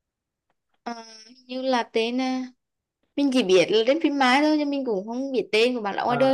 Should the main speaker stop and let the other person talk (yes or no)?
yes